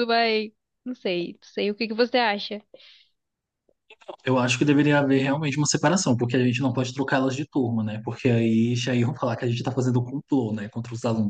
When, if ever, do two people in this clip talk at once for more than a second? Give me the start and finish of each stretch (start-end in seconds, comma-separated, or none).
none